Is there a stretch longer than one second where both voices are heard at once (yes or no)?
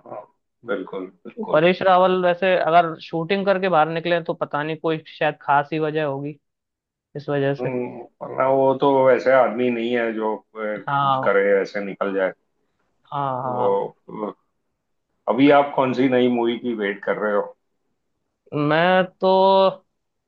no